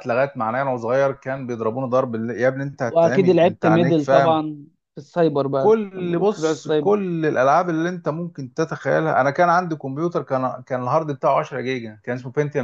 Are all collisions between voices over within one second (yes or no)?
no